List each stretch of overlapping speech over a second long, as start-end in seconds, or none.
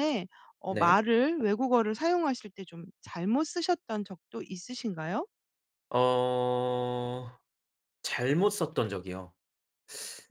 none